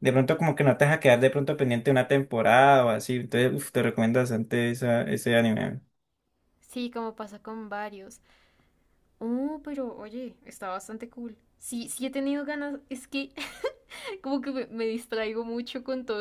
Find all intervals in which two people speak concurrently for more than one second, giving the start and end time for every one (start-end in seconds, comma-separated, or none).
none